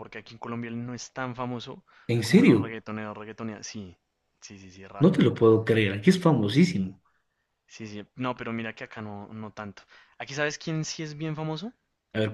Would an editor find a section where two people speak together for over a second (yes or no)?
no